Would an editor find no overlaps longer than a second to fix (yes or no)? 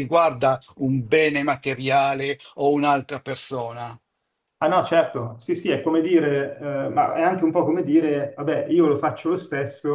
yes